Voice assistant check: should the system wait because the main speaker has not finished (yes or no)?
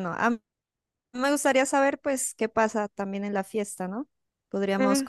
yes